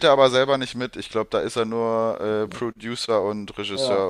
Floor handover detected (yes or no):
yes